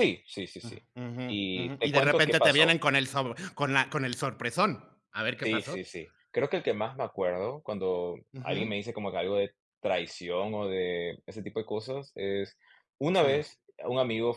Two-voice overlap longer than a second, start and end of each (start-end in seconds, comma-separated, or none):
1.3-2.8